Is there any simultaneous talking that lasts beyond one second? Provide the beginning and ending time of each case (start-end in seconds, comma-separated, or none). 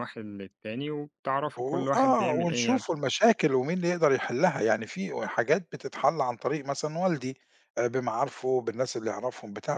1.6-2.8